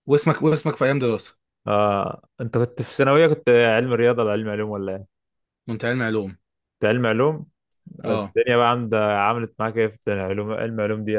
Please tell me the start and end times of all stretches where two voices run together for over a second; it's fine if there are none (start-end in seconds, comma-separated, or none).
none